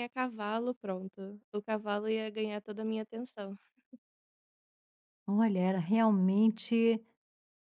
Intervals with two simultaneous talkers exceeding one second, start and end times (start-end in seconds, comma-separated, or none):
none